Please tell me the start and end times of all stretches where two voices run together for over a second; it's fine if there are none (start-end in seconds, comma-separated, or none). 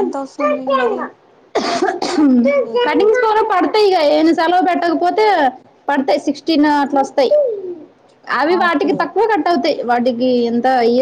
none